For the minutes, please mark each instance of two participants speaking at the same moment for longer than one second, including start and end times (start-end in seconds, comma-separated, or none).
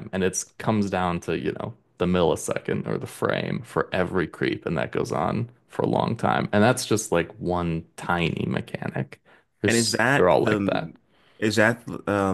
9.7-10.9